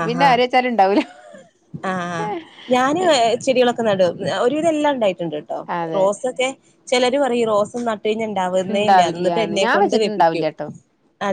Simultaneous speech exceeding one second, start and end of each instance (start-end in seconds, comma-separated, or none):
8.7-10.5